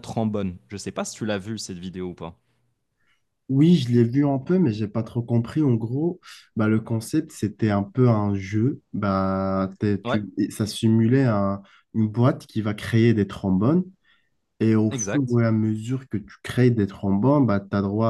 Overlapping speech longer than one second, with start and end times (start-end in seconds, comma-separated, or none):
none